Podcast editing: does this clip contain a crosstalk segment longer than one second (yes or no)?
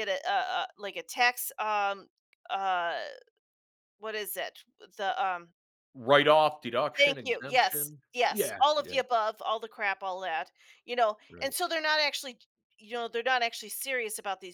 yes